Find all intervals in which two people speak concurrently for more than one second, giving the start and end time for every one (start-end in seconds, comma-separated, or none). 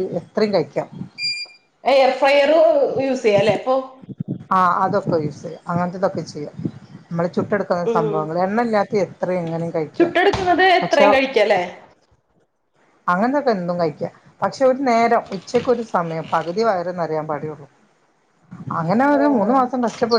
none